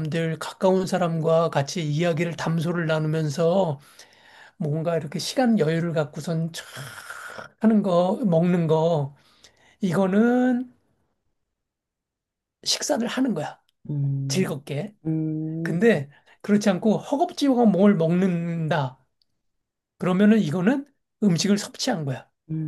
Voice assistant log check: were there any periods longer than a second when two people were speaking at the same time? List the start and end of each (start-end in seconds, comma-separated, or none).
none